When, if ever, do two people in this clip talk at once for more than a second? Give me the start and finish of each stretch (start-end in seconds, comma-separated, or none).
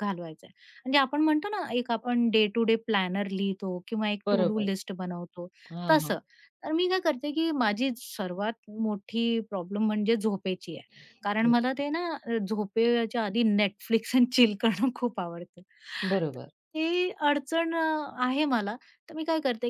none